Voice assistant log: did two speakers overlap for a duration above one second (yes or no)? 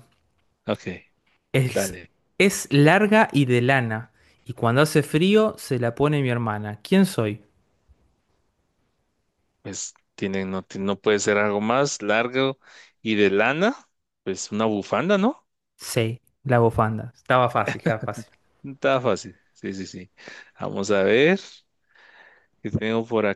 no